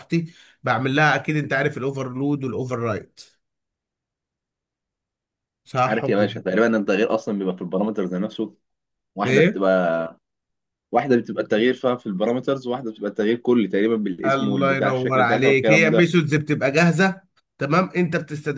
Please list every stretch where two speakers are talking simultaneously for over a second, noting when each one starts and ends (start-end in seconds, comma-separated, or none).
14.2-16.1